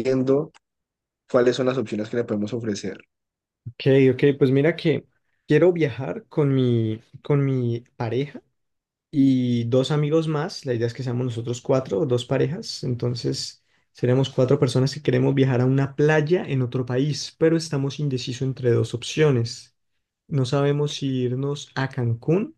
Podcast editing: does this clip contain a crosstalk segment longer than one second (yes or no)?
no